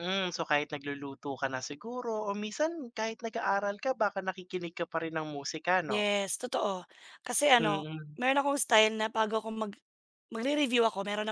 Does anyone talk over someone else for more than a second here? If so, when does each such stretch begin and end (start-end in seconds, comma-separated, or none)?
none